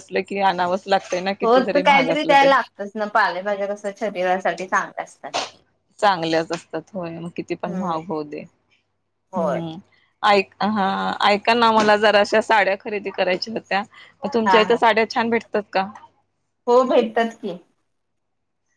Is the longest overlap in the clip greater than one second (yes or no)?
no